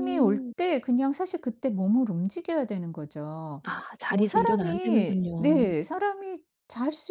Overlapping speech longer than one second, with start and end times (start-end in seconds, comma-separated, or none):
4.1-5.6